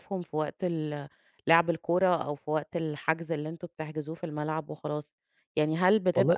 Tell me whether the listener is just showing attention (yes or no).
yes